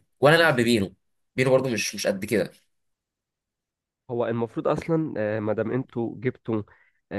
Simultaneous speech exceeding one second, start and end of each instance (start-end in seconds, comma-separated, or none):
none